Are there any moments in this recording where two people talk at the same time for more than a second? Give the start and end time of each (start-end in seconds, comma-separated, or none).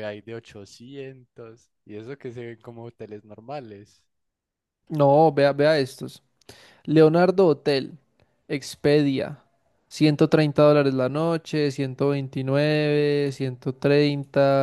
none